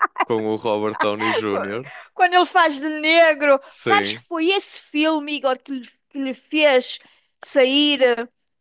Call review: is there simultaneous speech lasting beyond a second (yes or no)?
no